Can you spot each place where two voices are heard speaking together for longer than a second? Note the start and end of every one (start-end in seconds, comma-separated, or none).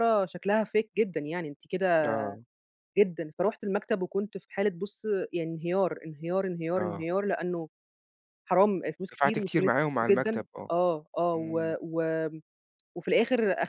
9.1-10.7